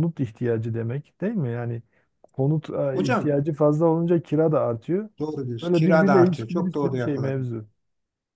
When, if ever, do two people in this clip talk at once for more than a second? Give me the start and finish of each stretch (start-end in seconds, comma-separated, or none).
5.6-7.5